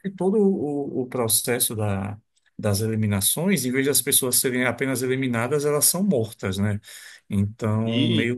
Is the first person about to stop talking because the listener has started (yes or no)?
no